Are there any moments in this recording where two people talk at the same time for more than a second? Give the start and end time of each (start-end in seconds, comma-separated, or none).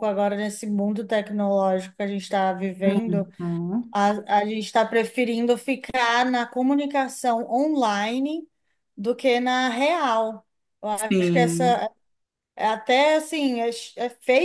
none